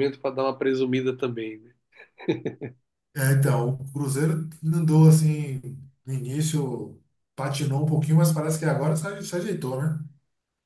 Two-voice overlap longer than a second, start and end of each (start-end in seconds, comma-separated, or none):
none